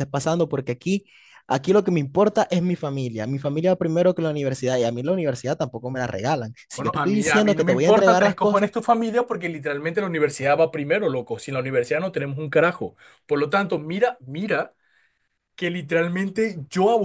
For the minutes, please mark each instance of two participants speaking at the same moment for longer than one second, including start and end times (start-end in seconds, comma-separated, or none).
6.7-8.7